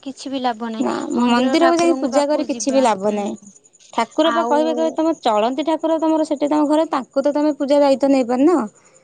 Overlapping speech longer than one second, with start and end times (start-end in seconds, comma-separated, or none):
0.8-3.2